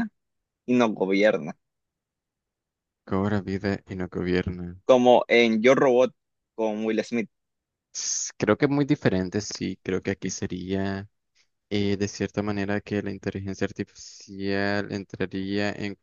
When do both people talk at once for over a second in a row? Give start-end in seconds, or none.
none